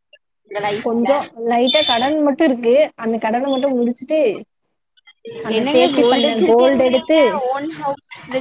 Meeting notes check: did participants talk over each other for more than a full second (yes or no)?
yes